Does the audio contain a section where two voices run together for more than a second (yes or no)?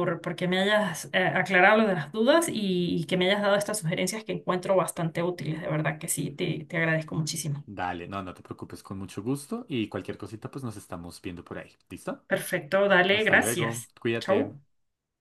yes